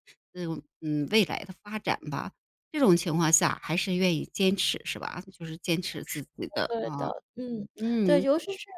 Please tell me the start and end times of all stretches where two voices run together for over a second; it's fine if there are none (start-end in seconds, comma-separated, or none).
none